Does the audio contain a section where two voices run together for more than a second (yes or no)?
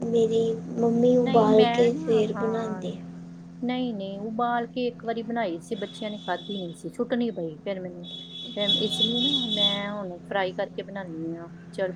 yes